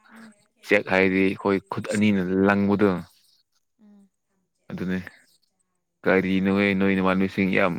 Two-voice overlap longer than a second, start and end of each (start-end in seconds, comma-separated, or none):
0.7-2.6